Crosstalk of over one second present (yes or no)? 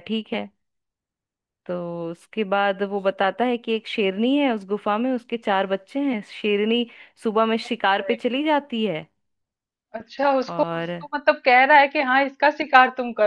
no